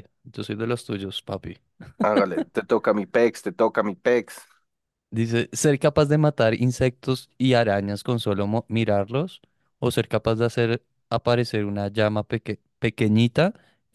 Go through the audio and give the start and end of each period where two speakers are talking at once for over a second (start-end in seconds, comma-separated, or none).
none